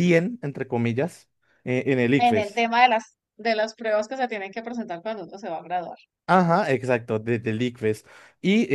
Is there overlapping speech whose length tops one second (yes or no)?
no